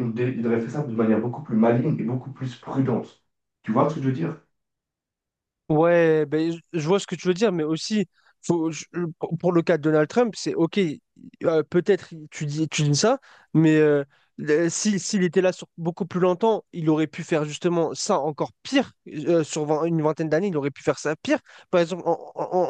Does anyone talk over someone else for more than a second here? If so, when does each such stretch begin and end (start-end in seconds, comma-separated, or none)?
none